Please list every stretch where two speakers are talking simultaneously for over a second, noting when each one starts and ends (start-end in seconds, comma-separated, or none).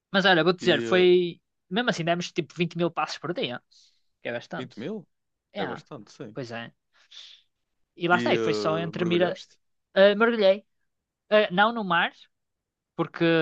8.1-9.4